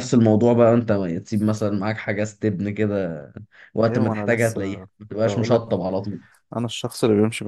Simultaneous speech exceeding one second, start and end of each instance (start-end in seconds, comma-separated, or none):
3.8-5.8